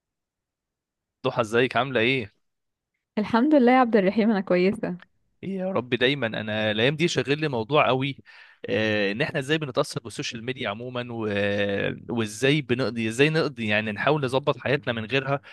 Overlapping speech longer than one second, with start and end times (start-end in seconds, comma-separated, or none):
none